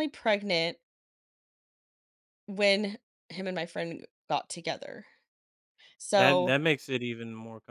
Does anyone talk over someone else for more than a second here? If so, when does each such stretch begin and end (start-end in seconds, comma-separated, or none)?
none